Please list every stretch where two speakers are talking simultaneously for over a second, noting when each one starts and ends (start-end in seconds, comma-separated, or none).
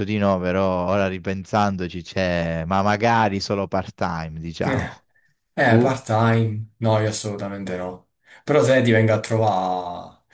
none